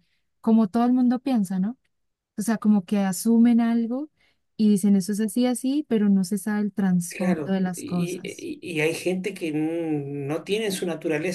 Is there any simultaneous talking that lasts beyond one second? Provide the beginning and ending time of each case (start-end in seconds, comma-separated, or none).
7.1-8.5